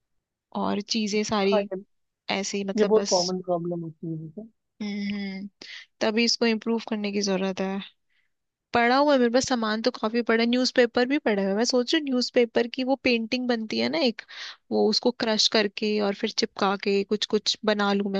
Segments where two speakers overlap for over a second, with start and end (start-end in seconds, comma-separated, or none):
none